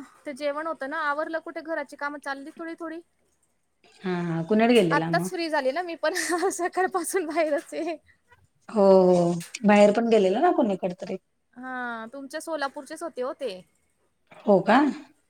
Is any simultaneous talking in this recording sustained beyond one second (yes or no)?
no